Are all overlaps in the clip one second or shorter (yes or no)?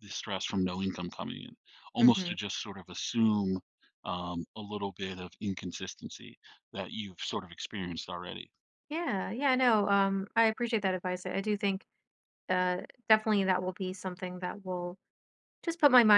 yes